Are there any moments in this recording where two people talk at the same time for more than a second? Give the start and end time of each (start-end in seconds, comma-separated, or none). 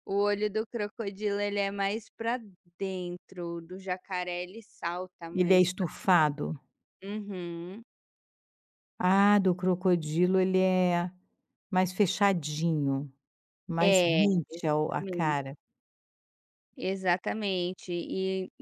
13.8-15.4